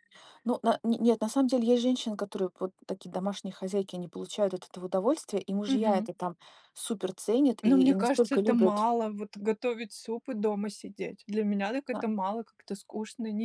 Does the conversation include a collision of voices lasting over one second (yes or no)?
yes